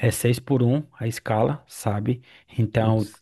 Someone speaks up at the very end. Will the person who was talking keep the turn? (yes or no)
yes